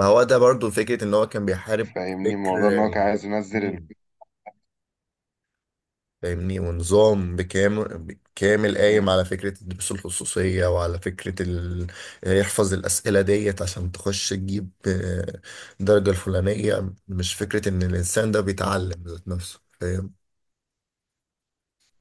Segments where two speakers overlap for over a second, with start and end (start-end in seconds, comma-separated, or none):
none